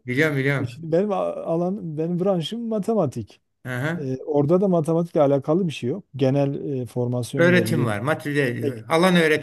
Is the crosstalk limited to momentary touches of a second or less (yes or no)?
yes